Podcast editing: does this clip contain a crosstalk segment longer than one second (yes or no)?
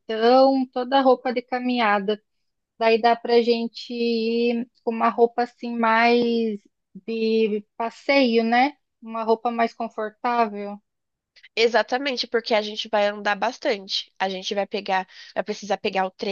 no